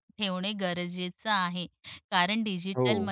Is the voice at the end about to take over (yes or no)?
no